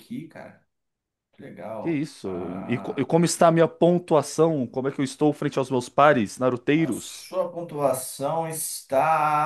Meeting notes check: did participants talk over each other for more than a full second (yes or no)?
yes